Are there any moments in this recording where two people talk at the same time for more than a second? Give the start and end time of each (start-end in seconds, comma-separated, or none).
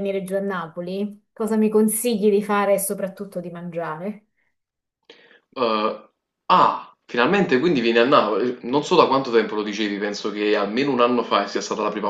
none